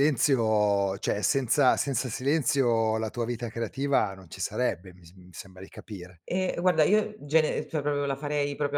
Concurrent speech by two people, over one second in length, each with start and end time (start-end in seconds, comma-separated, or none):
none